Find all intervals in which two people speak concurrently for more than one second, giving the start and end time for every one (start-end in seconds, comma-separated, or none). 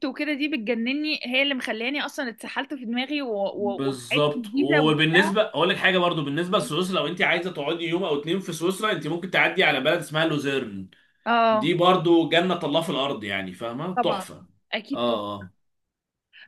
3.5-5.3